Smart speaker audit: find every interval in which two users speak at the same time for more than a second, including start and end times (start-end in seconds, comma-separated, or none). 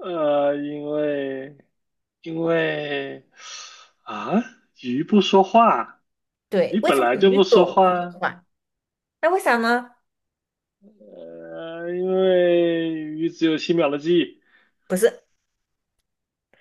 6.7-8.2